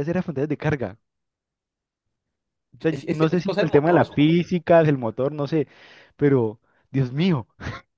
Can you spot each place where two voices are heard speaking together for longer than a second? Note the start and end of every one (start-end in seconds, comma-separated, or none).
2.9-4.5